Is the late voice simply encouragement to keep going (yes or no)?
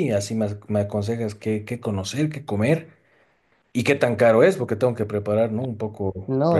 no